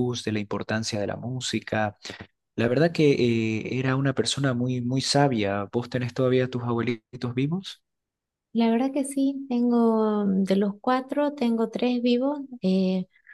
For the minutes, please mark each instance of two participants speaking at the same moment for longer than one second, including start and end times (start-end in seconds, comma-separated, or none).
none